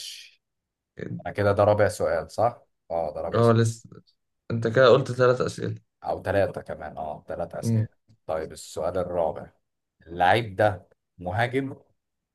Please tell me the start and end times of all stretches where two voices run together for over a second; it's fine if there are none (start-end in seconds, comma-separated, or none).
none